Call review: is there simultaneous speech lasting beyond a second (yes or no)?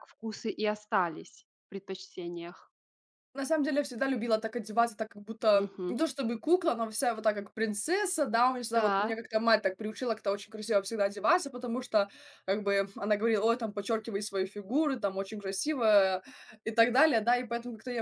no